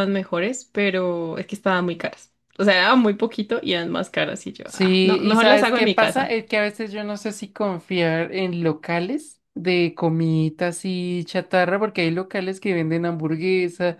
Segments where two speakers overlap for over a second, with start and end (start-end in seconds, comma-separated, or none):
4.7-6.3